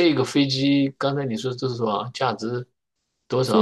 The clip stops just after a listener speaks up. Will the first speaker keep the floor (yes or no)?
no